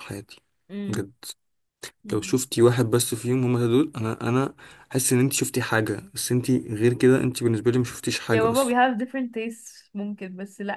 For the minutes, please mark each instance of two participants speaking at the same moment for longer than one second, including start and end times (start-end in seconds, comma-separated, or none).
none